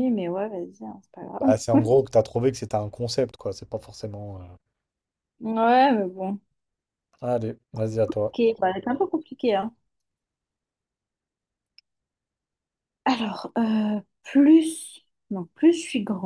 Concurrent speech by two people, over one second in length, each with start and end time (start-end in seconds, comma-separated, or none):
none